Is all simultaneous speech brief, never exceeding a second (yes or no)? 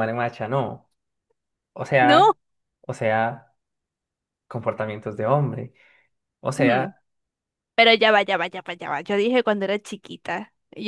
yes